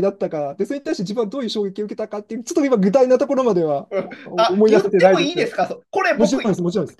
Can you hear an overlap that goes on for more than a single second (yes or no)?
yes